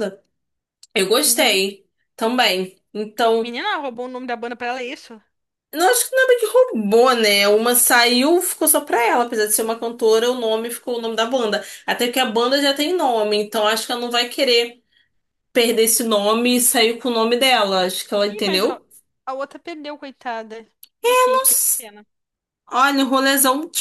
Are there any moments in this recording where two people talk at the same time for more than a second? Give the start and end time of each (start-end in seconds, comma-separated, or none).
none